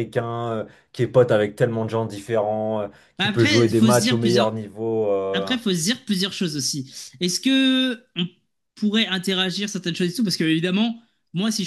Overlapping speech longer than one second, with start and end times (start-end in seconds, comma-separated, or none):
3.2-4.5